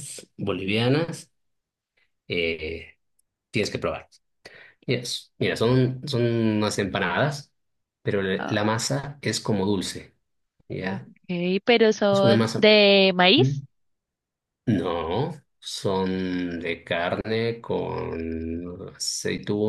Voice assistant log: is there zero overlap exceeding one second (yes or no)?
yes